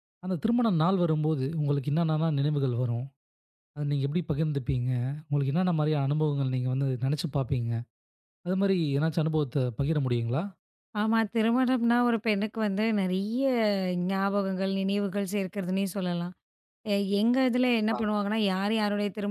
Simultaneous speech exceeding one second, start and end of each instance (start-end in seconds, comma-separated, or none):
none